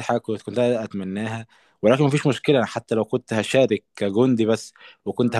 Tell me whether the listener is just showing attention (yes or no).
yes